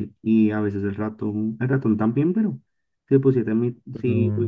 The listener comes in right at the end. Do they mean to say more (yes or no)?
no